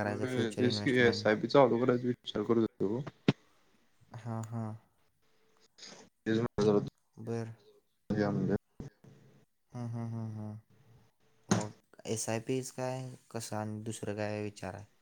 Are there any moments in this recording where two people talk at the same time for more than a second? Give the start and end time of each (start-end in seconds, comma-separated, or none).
none